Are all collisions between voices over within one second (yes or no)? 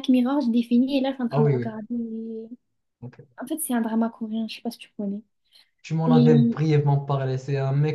yes